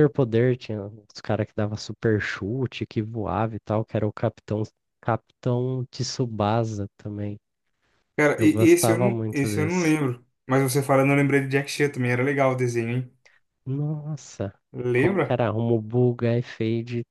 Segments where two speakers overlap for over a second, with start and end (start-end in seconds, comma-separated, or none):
8.4-9.9